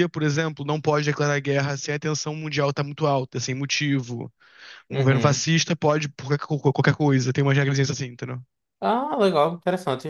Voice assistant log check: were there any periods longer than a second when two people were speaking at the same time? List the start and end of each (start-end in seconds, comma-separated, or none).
none